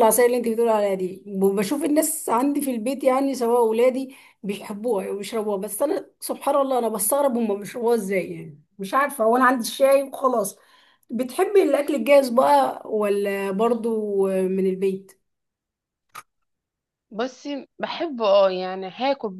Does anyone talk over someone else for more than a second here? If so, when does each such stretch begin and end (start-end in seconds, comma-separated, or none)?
none